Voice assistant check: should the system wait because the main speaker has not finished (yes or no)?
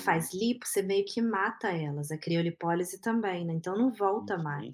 no